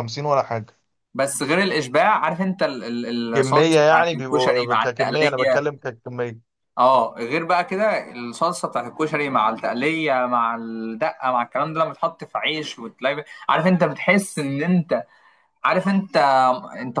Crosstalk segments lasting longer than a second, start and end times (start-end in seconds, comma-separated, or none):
3.3-5.6